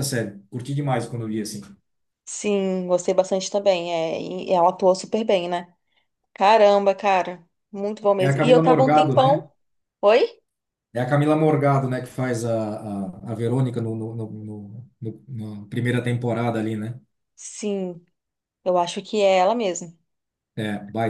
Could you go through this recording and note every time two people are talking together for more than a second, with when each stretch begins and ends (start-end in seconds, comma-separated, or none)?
8.2-9.4